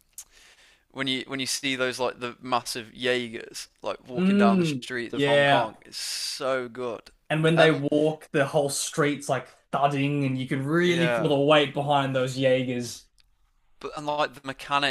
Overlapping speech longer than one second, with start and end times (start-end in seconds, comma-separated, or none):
4.1-5.8